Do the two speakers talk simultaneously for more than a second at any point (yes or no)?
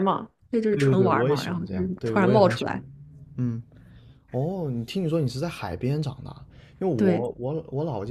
yes